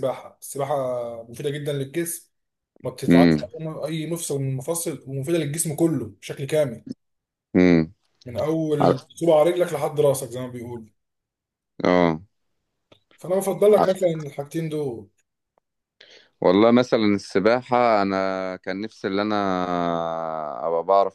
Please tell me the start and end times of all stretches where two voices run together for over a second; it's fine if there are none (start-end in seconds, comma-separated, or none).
none